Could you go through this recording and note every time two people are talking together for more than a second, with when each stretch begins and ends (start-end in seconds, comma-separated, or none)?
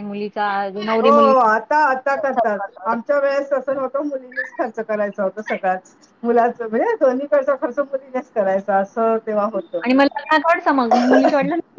none